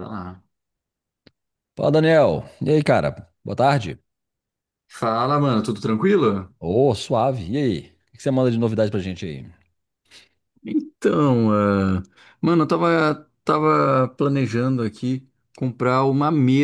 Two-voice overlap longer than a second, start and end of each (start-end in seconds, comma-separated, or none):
none